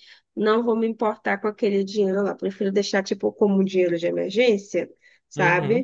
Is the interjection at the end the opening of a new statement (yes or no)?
no